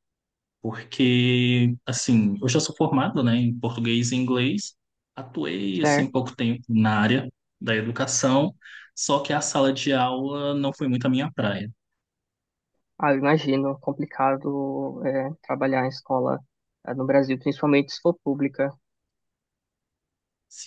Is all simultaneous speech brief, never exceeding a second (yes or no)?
yes